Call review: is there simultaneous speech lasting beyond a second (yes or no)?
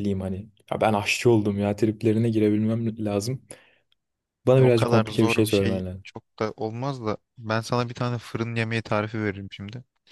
yes